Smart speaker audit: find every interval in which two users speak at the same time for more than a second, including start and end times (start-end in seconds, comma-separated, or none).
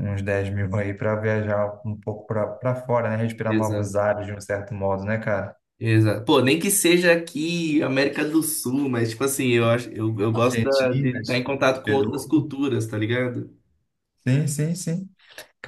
10.3-12.5